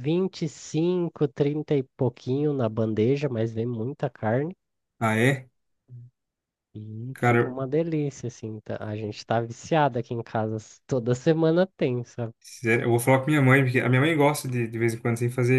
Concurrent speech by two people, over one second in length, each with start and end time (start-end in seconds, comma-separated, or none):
none